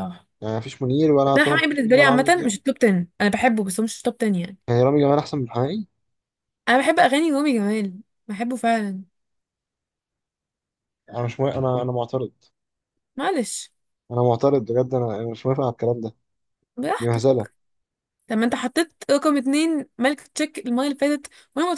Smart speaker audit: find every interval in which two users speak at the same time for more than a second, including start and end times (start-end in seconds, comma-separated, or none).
1.2-2.5